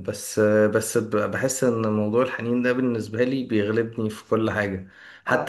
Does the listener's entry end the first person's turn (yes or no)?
no